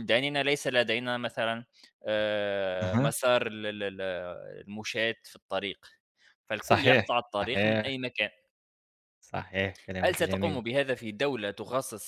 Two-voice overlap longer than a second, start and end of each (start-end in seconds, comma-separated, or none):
6.6-8.0